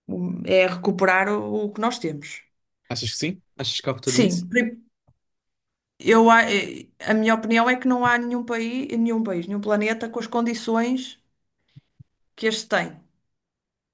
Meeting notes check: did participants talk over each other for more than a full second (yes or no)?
no